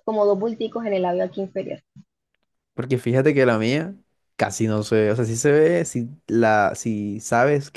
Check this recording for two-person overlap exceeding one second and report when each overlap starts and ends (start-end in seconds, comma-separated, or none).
none